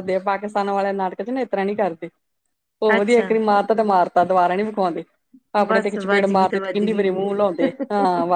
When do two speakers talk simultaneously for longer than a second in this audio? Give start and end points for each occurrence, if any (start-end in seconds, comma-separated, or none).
5.7-7.1